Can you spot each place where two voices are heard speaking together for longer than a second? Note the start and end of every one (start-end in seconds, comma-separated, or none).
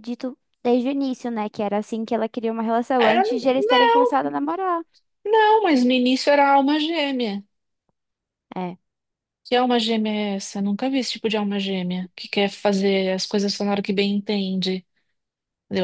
none